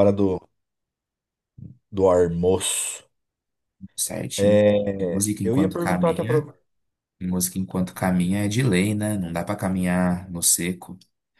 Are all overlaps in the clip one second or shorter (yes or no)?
no